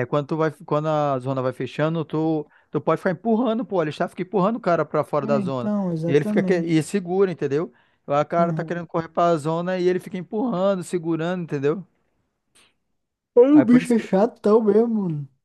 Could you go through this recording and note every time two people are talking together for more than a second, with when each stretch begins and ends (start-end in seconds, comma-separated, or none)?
5.2-6.8